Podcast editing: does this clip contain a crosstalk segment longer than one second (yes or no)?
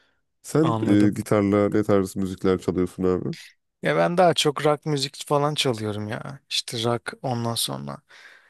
no